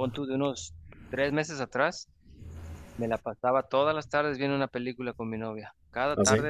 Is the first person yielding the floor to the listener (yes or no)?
no